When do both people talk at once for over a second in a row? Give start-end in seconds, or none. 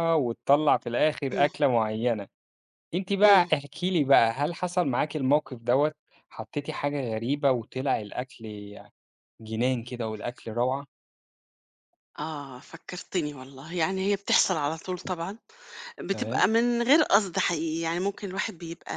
none